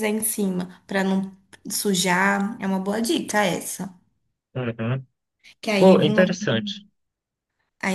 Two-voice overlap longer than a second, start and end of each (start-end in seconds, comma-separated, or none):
none